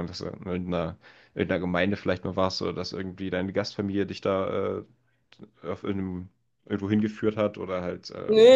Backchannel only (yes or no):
no